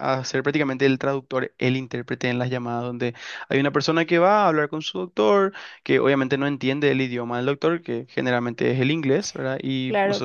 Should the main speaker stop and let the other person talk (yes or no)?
yes